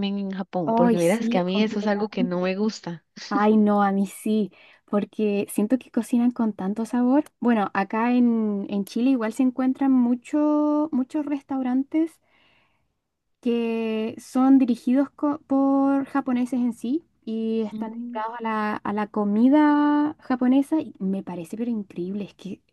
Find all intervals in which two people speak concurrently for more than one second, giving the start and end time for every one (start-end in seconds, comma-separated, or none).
0.7-2.5